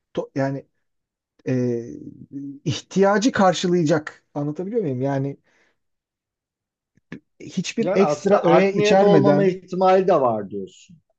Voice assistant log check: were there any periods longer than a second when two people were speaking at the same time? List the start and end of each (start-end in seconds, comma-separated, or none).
7.8-9.6